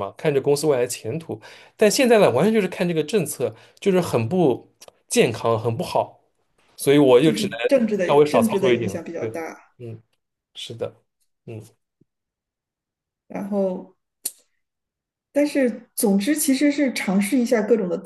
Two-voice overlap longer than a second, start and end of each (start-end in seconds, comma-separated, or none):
7.2-9.4